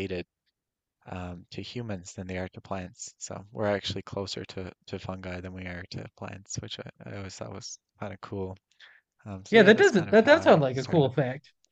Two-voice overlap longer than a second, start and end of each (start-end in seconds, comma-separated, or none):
9.5-11.1